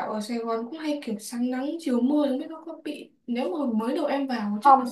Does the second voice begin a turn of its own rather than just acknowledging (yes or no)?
no